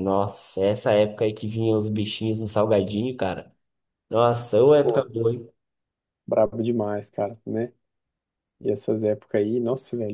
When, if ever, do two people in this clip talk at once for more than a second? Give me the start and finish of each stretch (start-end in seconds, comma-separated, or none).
none